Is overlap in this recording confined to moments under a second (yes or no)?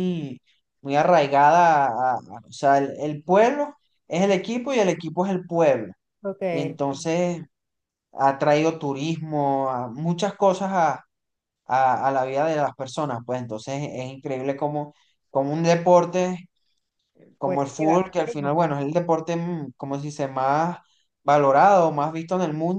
no